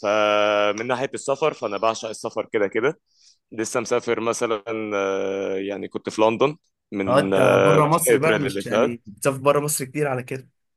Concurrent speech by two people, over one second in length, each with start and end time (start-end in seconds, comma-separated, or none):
7.1-9.0